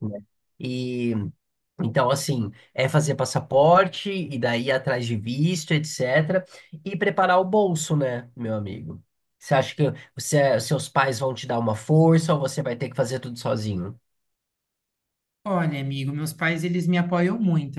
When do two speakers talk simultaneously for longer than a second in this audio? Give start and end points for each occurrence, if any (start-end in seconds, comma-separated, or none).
none